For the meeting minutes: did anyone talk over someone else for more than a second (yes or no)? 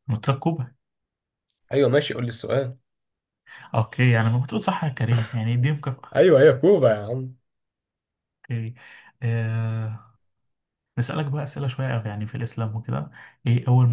no